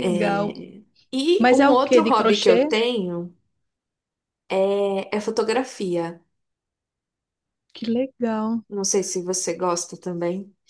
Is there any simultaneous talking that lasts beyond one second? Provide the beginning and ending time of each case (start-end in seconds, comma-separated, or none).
1.4-2.7